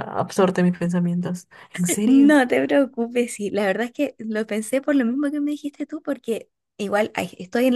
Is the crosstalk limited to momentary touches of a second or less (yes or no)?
yes